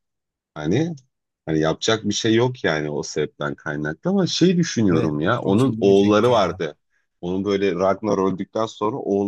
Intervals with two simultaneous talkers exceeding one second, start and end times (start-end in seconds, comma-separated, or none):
4.9-6.6